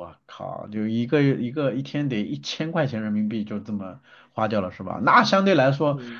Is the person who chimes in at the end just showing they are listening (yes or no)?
yes